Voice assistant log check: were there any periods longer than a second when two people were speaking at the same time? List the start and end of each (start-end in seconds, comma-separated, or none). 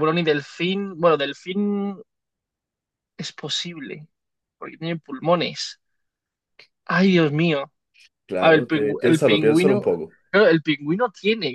8.4-9.9